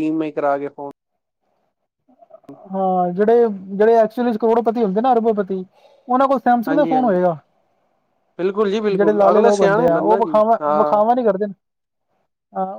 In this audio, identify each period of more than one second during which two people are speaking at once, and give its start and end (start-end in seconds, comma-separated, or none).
8.9-11.0